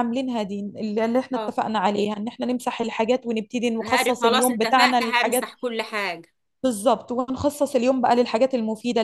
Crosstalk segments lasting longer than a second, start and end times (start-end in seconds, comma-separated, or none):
3.8-5.5